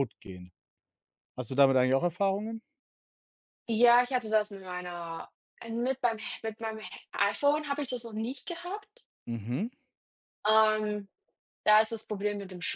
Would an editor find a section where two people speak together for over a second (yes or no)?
no